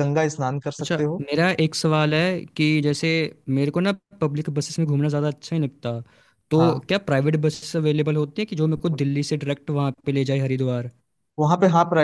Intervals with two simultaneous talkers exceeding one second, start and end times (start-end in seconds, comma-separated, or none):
none